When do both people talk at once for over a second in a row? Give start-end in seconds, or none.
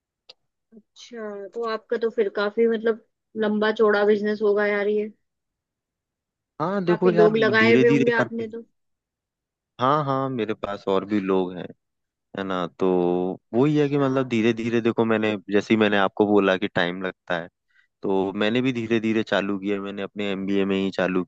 6.9-8.4